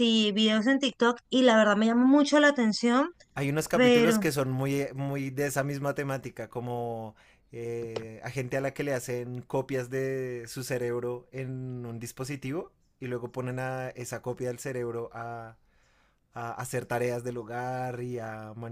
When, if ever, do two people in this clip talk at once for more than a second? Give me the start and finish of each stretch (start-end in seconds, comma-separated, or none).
none